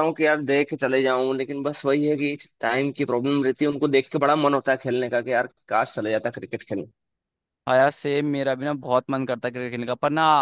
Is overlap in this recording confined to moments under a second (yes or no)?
yes